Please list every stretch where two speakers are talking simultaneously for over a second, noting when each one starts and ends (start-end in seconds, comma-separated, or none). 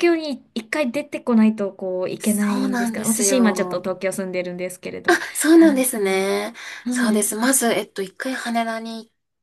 2.2-3.9